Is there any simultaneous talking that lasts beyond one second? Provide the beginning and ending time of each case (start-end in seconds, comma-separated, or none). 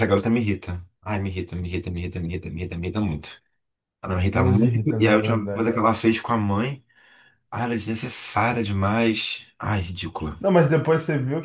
4.3-5.7